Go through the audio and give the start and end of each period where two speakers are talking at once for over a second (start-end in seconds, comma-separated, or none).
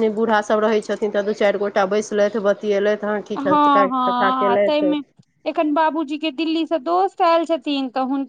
3.4-4.9